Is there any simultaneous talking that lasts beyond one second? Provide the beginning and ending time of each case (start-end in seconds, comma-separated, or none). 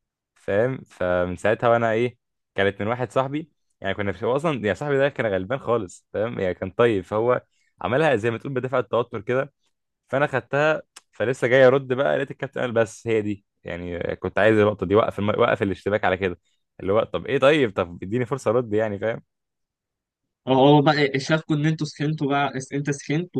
none